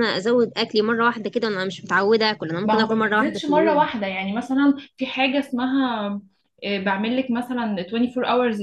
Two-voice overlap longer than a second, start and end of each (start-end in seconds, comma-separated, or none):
2.6-3.9